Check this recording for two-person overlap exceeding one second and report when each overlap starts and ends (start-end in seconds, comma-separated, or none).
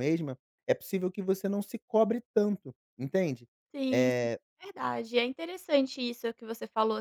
none